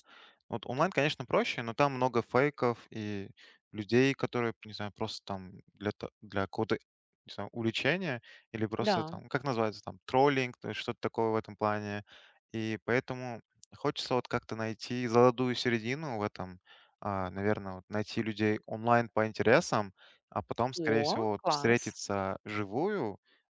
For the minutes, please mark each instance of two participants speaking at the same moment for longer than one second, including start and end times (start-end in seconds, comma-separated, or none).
20.8-22.0